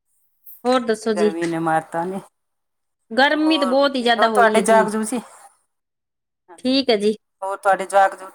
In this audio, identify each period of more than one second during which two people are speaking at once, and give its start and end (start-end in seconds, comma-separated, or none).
3.4-4.9